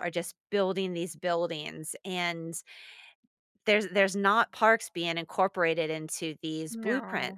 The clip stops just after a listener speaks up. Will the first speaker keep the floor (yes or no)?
yes